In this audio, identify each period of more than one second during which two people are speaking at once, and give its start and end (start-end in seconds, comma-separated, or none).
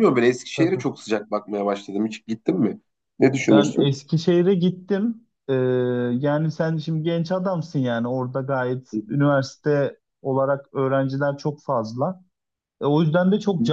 none